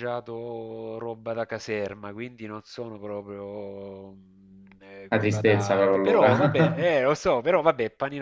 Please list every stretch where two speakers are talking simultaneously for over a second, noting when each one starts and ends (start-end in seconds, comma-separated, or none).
5.1-6.8